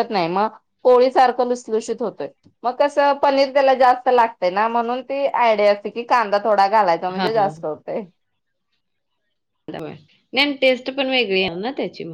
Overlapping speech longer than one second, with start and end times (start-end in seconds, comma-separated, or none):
none